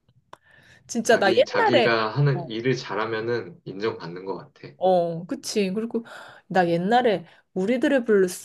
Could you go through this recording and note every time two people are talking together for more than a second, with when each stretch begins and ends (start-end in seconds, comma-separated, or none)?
1.0-2.5